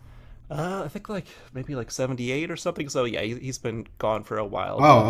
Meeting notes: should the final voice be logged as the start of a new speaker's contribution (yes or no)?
yes